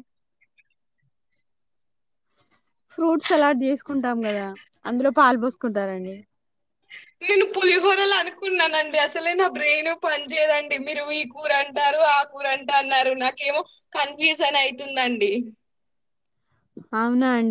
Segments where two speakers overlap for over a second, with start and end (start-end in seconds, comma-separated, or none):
none